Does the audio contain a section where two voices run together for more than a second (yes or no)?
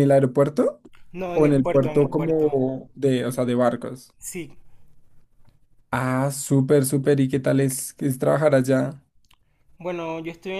yes